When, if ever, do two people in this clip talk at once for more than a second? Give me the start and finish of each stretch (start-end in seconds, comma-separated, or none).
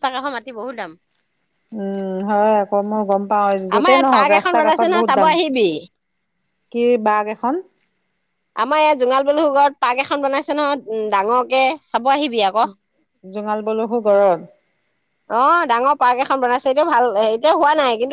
3.8-5.3